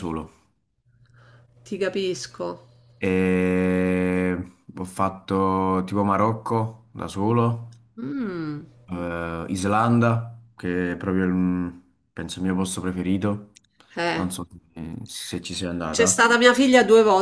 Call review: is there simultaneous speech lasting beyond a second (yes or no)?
no